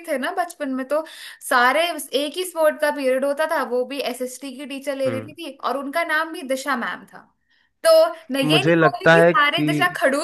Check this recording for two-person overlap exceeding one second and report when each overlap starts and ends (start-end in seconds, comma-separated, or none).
8.4-9.7